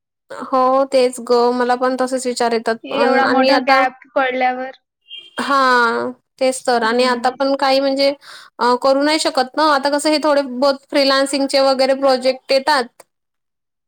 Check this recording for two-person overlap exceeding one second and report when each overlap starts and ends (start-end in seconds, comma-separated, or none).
none